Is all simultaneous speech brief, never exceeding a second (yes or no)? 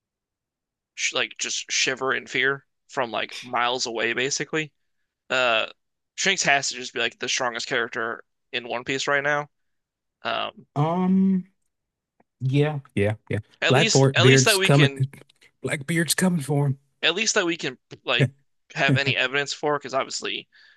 no